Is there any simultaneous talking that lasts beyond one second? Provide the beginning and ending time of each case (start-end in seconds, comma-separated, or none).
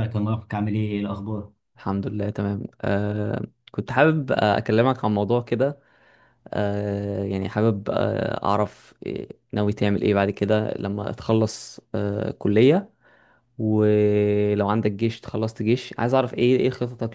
none